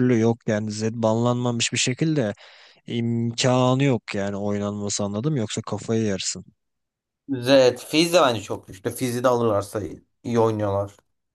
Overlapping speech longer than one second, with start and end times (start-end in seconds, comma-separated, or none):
none